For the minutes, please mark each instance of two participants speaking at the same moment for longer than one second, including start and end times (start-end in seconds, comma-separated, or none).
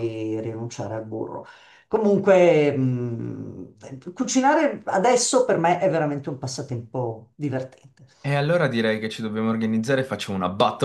none